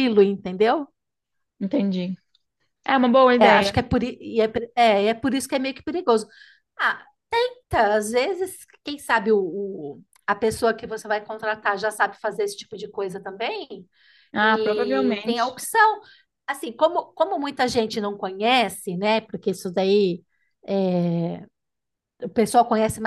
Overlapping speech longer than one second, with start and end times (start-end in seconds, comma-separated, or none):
14.4-15.6